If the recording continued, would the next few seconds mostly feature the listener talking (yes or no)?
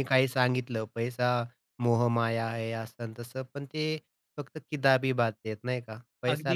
yes